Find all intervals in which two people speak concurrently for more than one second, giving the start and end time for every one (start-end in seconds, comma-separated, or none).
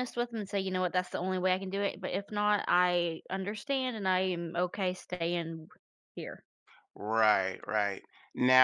none